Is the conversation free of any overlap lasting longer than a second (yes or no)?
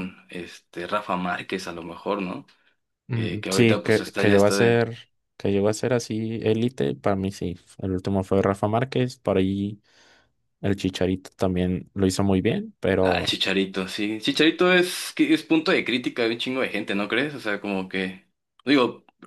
no